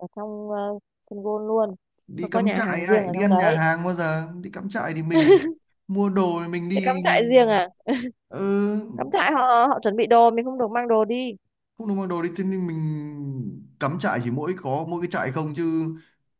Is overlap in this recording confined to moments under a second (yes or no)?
no